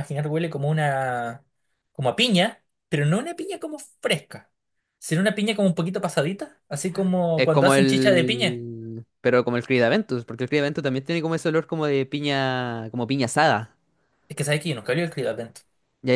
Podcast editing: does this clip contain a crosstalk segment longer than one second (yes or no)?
yes